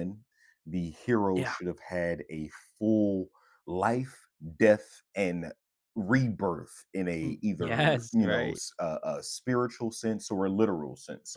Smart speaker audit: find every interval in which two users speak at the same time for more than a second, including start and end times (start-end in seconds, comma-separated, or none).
7.2-8.6